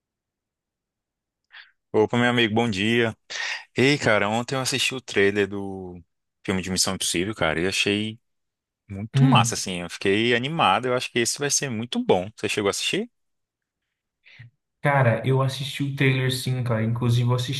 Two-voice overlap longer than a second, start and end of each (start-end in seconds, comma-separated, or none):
none